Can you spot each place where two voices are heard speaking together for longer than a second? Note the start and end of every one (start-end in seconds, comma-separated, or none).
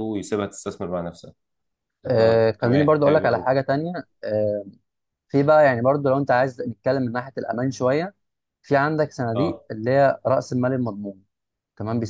2.1-3.5